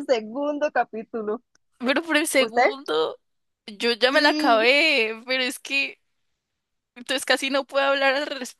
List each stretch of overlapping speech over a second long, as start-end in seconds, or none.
none